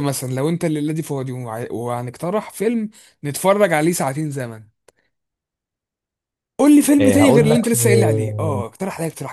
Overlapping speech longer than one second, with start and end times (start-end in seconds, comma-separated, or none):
7.0-8.6